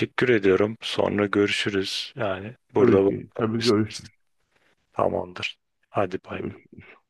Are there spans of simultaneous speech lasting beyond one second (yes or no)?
yes